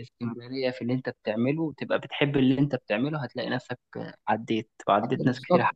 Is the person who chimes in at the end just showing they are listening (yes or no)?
no